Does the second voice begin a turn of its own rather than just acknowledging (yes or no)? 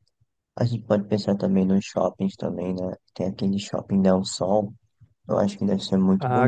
yes